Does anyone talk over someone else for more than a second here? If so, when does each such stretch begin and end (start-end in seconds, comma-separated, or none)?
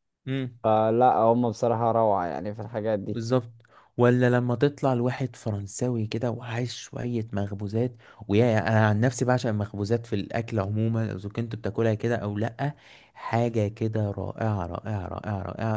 none